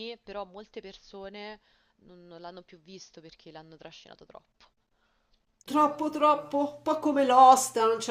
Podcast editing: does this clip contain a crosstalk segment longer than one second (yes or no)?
no